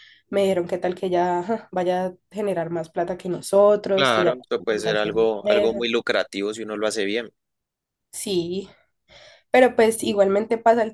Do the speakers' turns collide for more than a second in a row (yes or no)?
yes